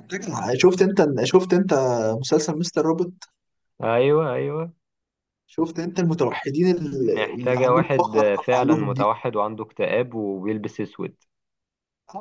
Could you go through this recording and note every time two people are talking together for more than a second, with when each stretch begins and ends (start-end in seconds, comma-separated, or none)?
7.0-9.1